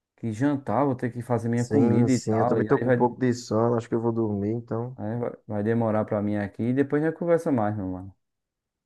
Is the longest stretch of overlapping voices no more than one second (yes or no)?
no